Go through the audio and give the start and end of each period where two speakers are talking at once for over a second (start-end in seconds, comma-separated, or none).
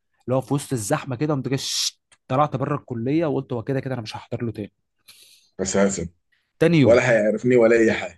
none